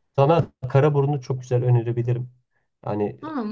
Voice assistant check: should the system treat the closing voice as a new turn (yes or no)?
no